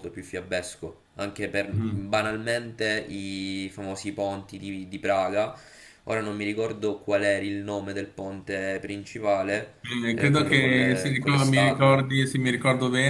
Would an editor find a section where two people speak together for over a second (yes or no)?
yes